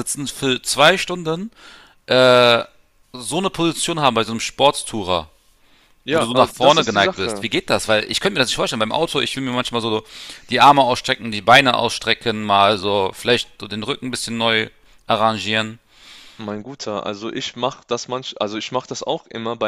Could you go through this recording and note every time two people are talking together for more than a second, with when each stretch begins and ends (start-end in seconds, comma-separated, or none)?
6.1-7.5